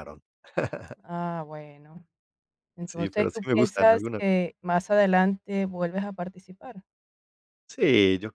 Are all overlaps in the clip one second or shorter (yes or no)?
no